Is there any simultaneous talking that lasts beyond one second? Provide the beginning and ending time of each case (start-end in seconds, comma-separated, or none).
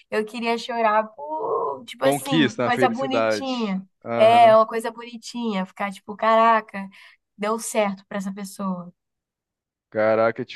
2.0-4.6